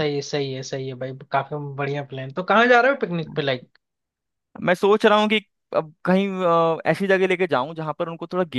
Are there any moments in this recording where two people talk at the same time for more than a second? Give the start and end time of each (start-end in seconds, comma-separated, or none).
none